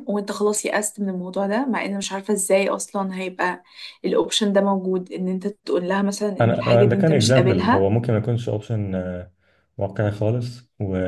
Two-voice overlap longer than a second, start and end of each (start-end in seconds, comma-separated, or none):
6.4-7.9